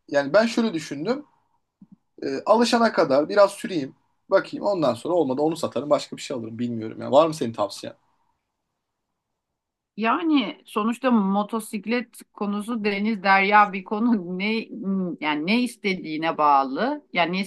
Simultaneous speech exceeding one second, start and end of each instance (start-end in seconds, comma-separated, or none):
none